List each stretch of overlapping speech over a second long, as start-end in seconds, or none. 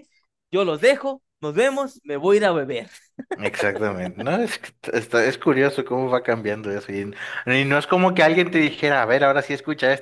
none